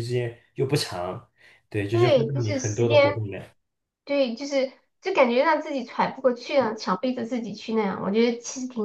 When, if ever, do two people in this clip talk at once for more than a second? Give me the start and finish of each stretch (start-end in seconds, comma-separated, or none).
1.9-3.2